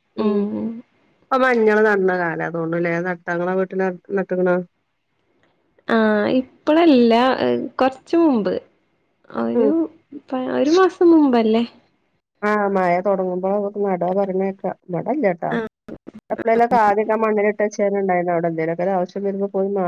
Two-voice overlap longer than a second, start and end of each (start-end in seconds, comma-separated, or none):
none